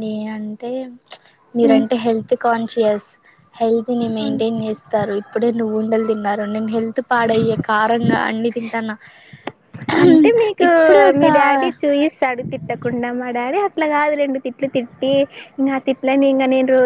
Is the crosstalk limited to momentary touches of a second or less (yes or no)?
yes